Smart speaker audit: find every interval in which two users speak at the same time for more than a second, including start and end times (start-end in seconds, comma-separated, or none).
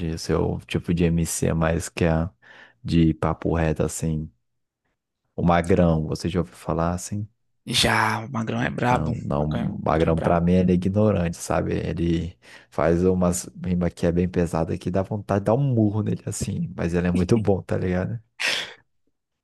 8.6-10.5